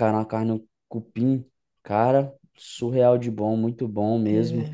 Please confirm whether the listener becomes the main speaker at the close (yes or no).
yes